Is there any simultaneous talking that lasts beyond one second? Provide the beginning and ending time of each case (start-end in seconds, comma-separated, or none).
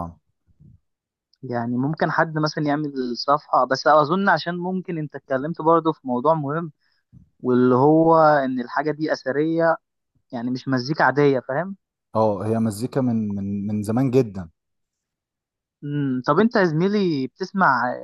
none